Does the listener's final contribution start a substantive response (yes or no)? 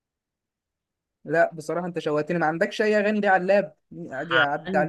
yes